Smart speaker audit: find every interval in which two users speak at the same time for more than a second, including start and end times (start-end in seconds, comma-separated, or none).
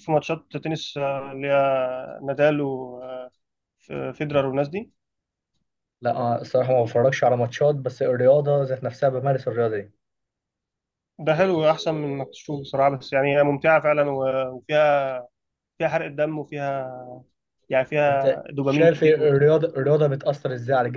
18.1-19.5